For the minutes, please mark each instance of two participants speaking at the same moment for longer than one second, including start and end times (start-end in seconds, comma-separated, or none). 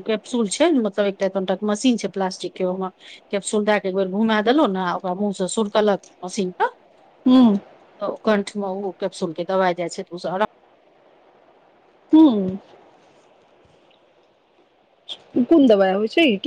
none